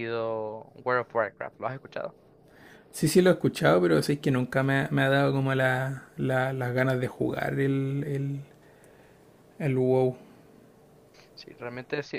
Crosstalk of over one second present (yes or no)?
no